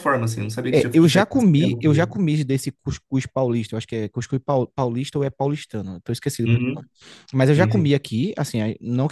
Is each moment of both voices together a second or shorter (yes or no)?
no